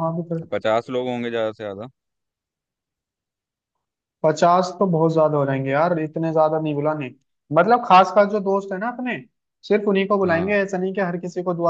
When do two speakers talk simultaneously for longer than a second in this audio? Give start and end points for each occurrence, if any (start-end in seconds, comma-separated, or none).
none